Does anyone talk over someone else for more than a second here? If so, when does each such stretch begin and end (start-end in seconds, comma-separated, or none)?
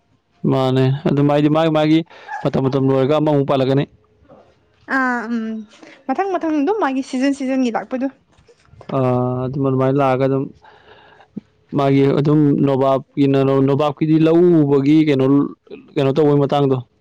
none